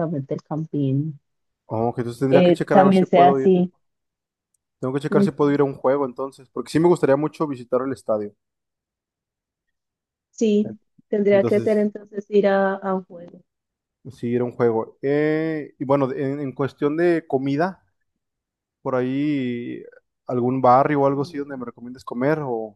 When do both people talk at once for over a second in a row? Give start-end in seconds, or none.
2.3-3.5